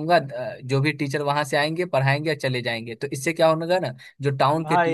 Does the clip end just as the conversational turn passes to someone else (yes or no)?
no